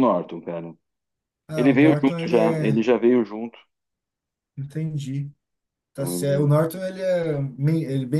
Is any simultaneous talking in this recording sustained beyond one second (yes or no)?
yes